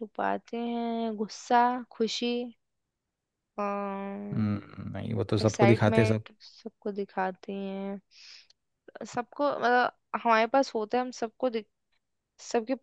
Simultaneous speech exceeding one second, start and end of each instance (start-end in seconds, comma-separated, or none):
none